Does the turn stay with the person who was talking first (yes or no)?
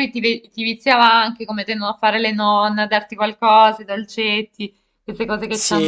no